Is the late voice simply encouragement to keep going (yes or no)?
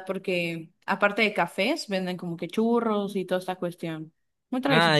no